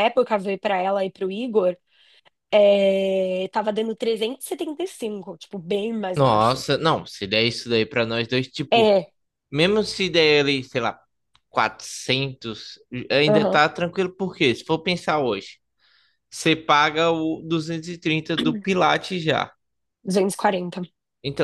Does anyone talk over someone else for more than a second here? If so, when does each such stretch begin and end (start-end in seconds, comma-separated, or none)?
none